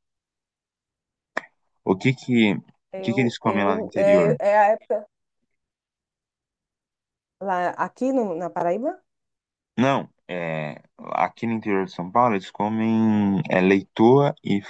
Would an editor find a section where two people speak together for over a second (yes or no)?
yes